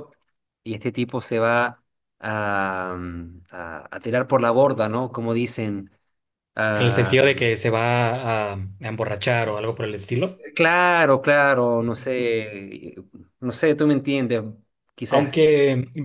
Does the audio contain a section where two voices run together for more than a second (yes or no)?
no